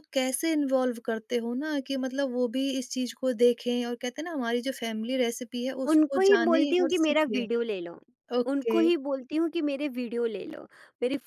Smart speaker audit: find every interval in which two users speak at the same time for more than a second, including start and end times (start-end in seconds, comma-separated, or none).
5.9-7.4